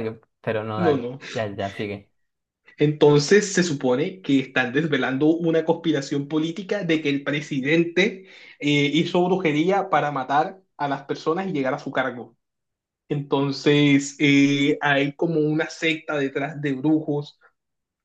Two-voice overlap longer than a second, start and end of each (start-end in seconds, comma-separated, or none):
none